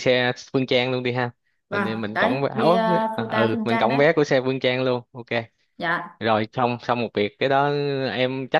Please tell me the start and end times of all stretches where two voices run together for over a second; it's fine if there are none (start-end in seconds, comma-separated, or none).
1.7-4.0